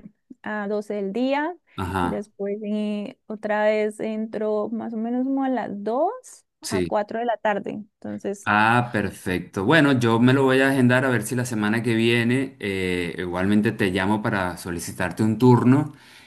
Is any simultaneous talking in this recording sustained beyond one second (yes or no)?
no